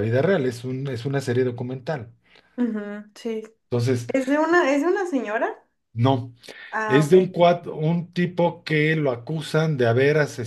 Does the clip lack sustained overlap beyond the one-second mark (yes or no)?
yes